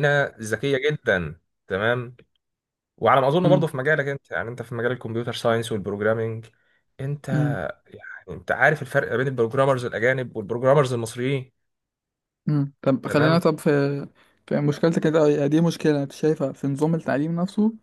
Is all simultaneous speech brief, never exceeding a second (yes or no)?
yes